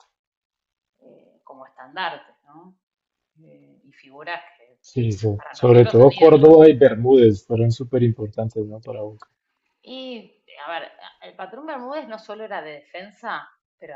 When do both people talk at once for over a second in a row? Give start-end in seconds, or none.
5.4-6.6